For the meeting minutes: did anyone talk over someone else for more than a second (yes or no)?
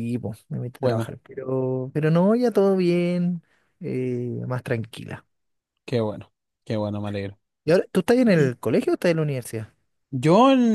no